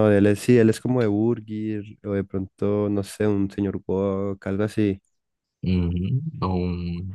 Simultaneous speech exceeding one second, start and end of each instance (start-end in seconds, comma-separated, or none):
none